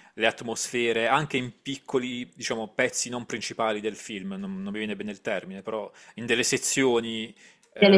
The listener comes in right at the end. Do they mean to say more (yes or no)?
no